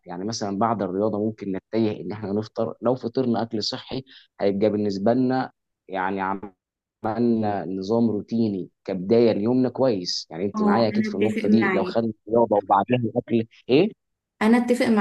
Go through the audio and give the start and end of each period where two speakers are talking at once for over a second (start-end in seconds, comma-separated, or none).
10.5-12.0